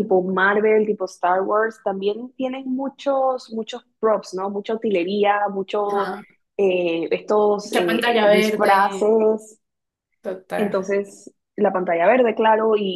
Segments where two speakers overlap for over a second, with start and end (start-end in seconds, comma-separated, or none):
7.6-9.1